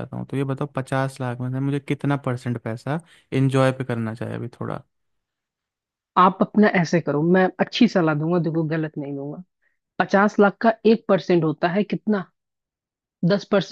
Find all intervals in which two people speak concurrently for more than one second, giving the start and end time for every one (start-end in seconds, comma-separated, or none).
none